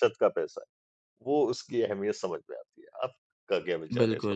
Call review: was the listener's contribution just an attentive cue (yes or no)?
no